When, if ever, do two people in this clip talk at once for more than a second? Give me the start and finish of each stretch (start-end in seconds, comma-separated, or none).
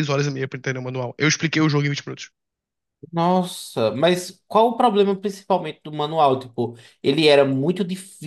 none